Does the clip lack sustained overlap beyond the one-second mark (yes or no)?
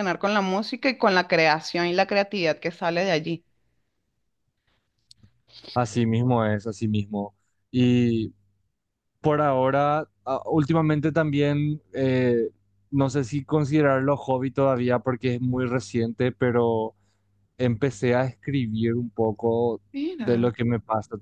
yes